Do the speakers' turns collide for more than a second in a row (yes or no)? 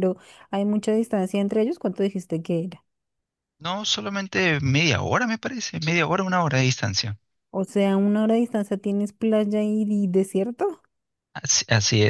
no